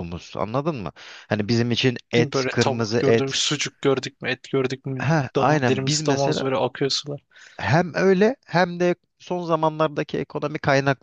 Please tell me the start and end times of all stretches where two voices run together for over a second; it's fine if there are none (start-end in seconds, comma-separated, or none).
2.2-3.4, 5.0-6.4